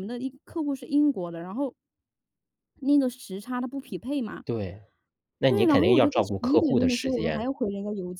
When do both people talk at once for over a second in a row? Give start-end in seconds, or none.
5.5-7.5